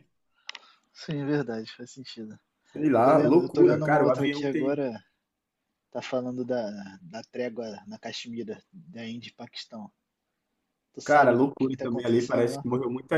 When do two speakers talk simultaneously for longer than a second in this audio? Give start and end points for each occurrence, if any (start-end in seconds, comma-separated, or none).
3.0-4.8, 11.0-12.7